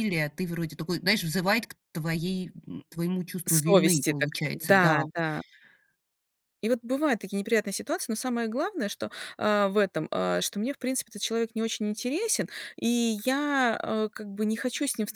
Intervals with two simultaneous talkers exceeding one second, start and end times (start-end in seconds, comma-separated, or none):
3.5-5.0